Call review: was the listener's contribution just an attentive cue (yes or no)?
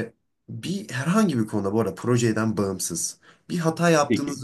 yes